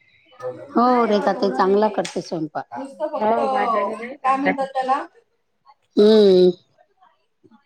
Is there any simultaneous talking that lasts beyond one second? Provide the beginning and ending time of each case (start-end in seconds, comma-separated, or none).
3.0-4.8